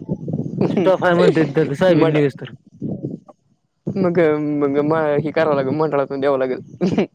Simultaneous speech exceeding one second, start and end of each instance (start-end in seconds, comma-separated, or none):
0.8-2.2